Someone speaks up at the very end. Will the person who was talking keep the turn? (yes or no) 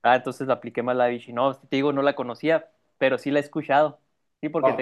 no